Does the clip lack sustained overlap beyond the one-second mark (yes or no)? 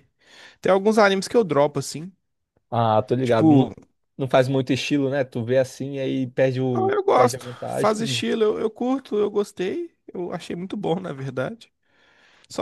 no